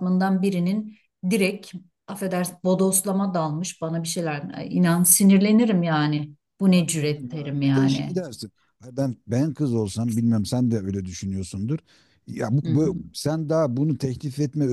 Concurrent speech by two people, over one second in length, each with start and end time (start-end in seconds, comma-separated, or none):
6.7-8.2